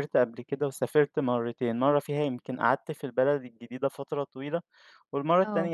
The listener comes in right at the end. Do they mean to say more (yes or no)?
no